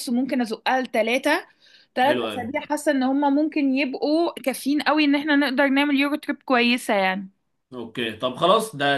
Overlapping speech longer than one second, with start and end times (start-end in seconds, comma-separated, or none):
none